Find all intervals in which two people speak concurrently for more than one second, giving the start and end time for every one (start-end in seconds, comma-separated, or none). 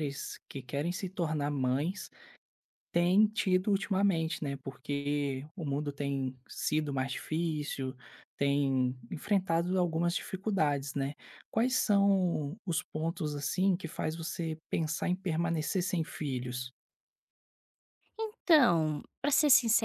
none